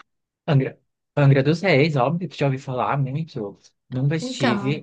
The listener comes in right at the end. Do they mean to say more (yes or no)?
no